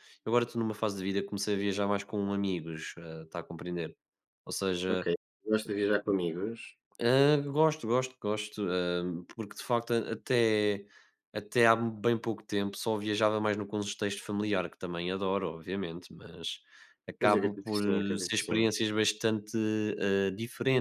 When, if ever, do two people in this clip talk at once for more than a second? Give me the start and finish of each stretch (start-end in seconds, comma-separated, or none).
17.2-18.7